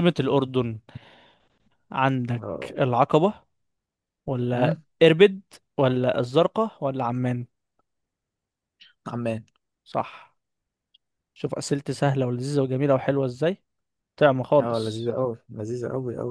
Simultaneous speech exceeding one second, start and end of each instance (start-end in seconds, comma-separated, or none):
none